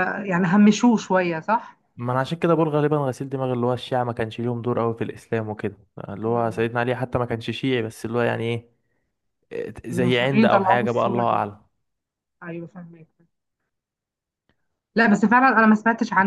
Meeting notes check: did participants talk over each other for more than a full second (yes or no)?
yes